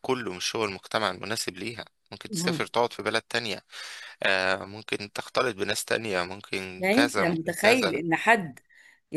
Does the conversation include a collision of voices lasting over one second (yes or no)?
yes